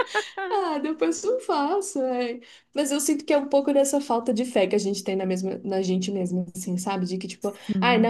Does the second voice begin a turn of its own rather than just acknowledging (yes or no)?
no